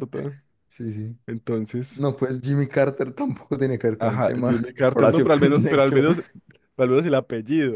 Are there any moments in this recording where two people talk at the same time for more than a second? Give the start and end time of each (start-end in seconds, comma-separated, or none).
4.0-6.0